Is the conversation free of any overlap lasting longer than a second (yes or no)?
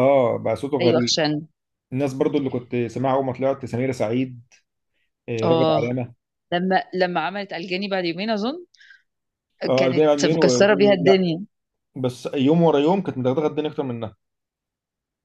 no